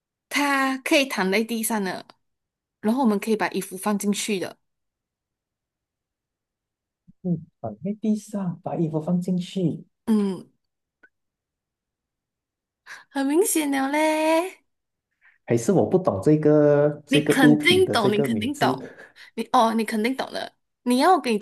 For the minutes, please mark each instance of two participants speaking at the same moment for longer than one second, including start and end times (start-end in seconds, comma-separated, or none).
17.1-18.8